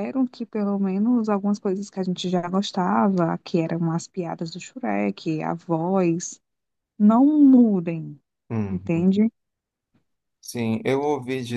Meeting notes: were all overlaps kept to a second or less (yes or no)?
yes